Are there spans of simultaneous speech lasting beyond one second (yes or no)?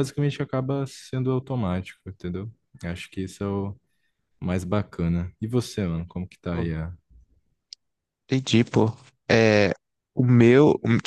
no